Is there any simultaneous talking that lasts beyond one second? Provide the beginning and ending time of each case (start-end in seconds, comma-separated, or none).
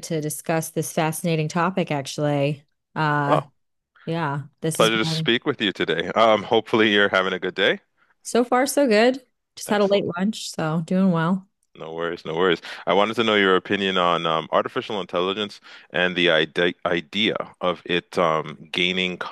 none